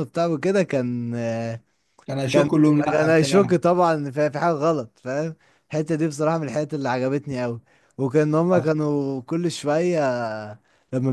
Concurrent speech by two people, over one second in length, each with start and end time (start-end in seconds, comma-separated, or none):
2.3-3.6